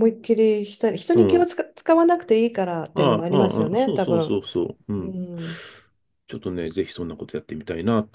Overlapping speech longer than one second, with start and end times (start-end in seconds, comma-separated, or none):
2.9-4.4